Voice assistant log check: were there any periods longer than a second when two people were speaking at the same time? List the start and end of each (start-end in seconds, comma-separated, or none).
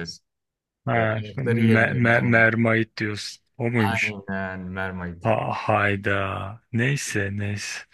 0.9-2.5